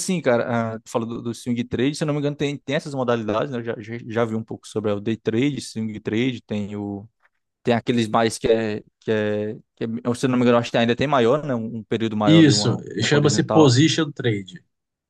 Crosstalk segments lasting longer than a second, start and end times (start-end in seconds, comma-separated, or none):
12.2-13.7